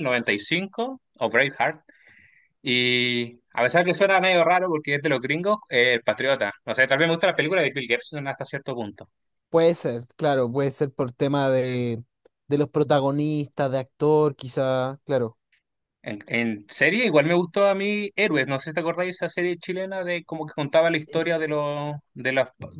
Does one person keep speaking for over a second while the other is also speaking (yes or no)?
no